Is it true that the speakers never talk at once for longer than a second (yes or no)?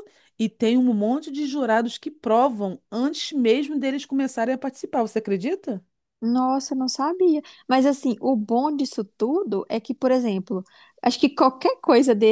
yes